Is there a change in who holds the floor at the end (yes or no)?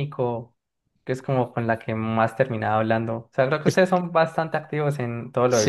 yes